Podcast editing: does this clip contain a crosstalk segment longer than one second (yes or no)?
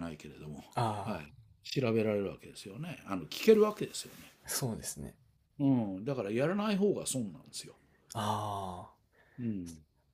no